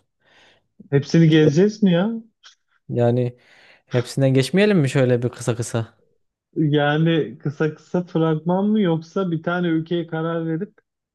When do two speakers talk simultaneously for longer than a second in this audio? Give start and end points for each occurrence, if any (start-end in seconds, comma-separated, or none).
none